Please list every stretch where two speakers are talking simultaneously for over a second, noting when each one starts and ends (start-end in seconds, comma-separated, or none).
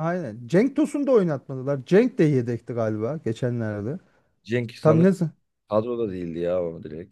none